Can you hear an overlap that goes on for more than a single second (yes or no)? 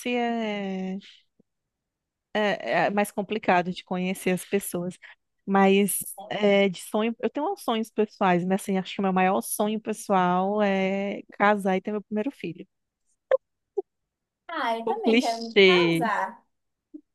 yes